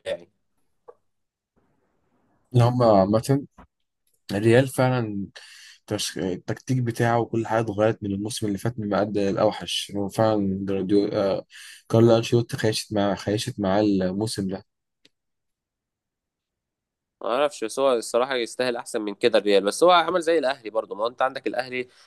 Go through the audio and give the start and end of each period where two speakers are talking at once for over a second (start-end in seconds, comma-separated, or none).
none